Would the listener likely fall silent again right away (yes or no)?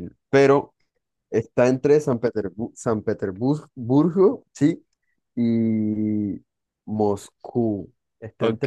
no